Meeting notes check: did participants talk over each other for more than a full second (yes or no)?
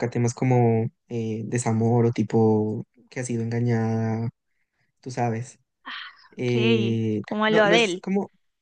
yes